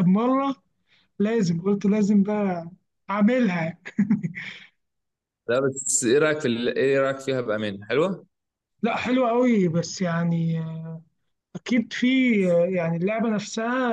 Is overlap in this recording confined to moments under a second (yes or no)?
yes